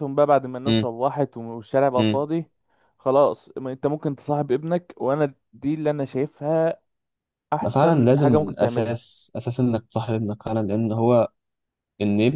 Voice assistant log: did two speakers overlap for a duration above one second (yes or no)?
yes